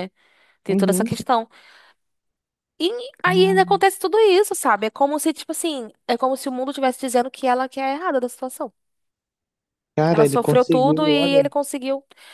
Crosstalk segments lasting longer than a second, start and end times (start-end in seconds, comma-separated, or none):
10.1-11.5